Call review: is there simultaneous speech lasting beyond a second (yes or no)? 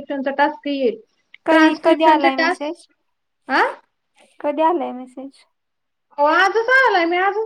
yes